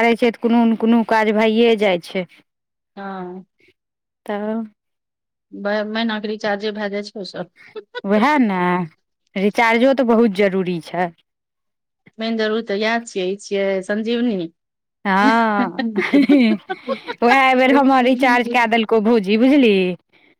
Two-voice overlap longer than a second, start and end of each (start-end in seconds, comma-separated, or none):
17.5-18.7